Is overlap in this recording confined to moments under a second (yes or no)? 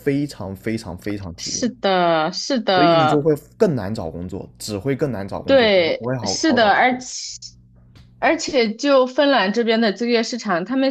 no